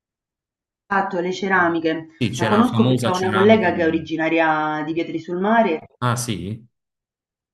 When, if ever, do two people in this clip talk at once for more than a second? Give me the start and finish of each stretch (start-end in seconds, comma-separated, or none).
2.2-4.1